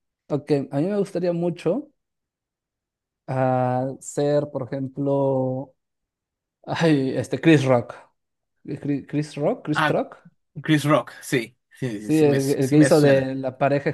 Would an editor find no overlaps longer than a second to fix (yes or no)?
no